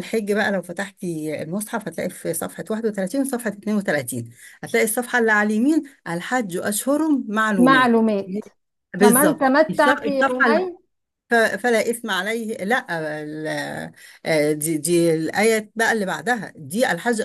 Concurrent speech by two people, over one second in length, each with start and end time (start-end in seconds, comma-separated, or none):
9.0-10.5